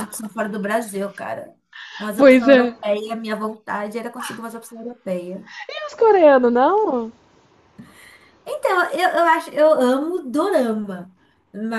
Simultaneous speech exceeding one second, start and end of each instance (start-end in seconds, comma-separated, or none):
none